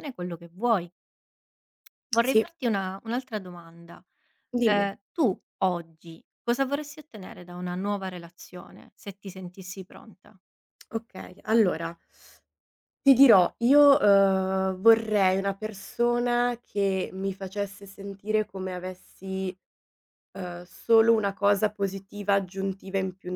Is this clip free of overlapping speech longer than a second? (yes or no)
yes